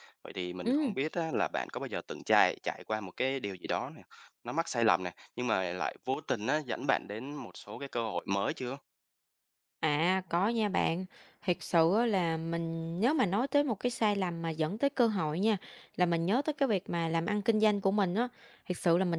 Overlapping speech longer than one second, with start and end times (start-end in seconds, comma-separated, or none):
none